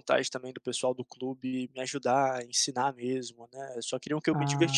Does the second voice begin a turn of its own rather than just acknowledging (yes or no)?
no